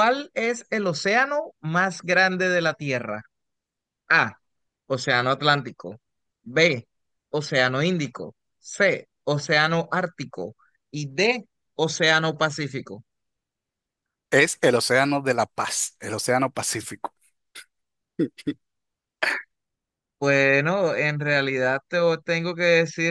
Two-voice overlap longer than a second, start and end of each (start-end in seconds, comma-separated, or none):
none